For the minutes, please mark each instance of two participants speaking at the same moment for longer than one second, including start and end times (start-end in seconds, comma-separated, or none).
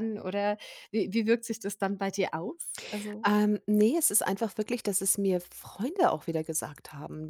none